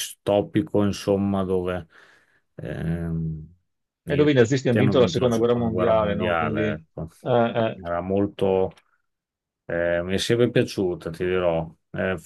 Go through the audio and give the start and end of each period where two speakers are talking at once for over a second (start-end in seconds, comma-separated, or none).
4.0-6.8